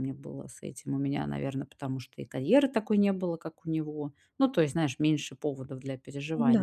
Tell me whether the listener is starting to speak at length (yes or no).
no